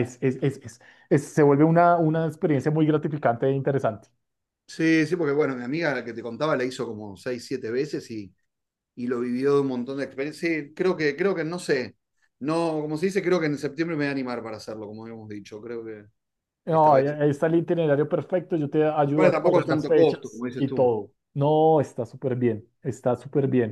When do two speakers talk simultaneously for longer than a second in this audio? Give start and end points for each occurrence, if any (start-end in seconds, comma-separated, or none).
19.1-20.9